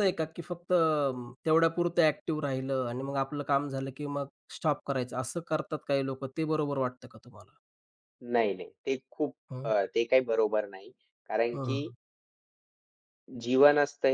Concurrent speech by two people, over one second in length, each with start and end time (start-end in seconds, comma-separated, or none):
none